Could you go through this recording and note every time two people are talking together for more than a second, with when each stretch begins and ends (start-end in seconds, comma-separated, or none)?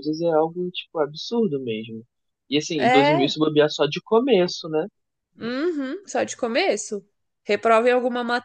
none